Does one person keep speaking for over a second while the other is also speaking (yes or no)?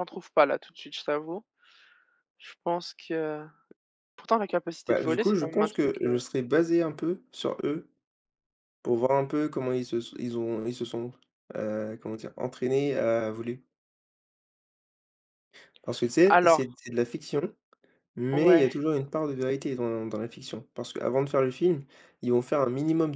yes